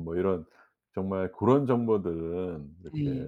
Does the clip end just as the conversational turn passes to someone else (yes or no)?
no